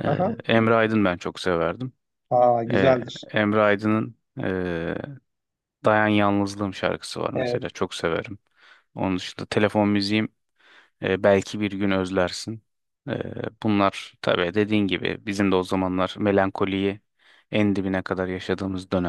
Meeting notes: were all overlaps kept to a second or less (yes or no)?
yes